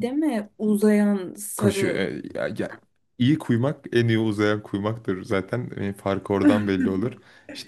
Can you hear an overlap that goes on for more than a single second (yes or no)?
no